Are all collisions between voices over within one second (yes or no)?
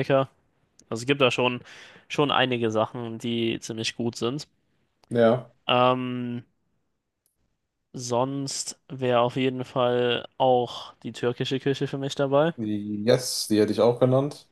yes